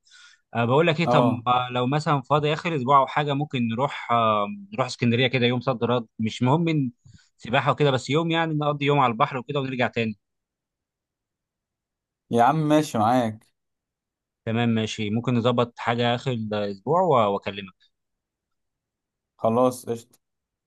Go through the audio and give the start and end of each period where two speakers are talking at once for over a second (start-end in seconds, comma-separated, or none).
none